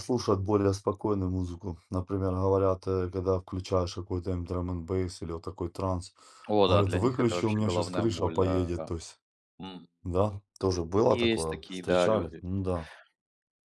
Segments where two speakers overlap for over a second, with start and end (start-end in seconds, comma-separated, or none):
6.7-8.9, 11.1-12.4